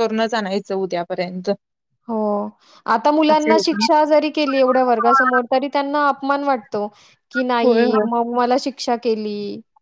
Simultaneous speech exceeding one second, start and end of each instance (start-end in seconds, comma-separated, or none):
none